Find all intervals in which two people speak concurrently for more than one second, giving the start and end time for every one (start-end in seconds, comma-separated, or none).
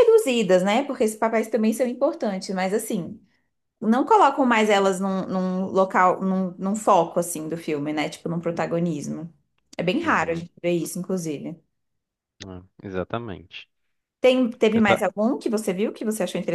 none